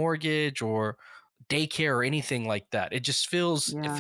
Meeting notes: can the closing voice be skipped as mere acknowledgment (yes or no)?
yes